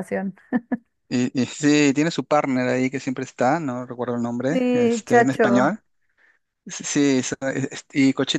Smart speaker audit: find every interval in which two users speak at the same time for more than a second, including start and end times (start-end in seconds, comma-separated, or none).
4.5-5.8